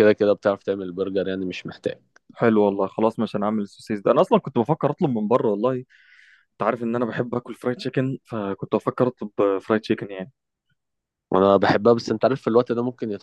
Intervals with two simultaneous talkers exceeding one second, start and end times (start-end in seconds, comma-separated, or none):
none